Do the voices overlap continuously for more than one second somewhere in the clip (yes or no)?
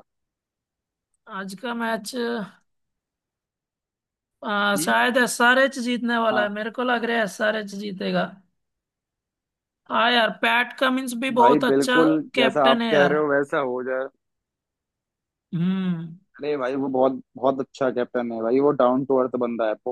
yes